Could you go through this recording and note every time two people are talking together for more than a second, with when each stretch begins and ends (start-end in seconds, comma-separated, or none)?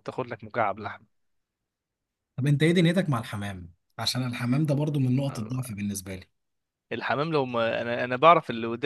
none